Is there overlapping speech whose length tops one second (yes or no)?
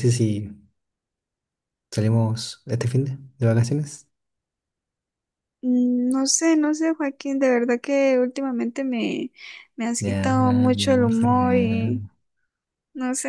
yes